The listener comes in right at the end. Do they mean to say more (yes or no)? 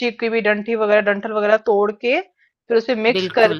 no